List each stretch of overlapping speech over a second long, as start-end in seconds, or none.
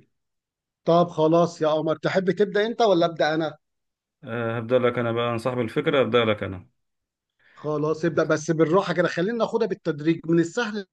none